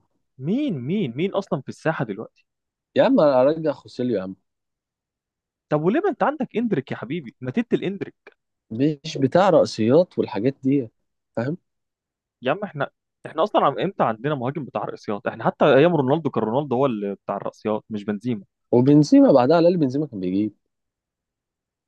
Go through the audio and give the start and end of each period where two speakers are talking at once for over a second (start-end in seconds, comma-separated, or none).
none